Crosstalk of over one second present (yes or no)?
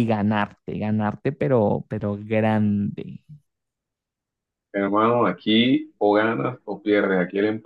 no